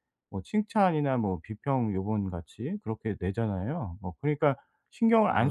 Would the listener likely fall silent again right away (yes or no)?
no